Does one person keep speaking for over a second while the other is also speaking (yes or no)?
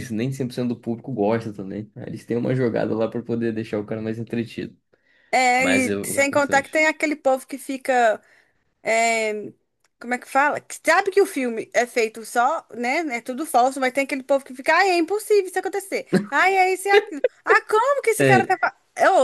yes